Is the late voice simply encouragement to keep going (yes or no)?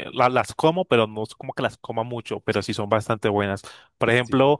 yes